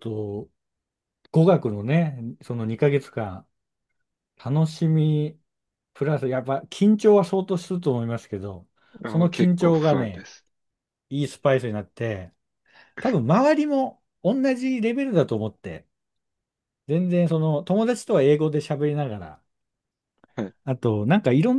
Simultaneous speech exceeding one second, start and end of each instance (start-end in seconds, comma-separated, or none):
9.1-10.3